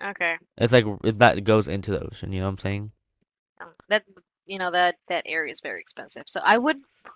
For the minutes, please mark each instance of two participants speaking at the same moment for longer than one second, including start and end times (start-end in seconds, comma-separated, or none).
none